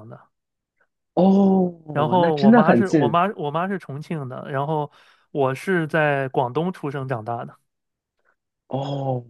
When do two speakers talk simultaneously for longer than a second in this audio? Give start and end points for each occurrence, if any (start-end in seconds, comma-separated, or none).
1.9-3.2